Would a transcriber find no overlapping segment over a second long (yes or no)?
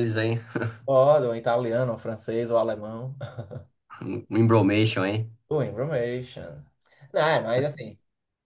yes